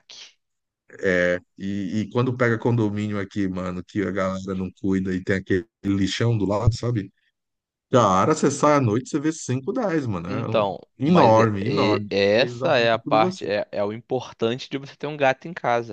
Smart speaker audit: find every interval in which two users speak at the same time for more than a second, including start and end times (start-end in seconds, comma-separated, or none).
10.3-13.5